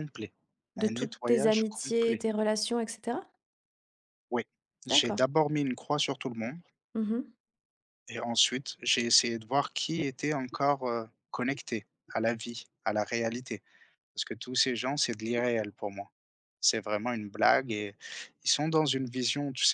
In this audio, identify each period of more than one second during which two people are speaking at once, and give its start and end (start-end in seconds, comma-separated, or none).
0.8-2.2